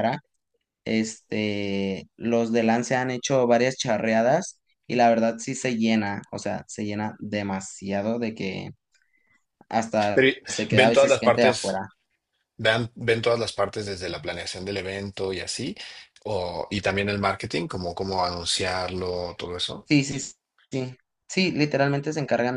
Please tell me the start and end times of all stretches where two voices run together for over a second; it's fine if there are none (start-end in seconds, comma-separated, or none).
10.1-11.8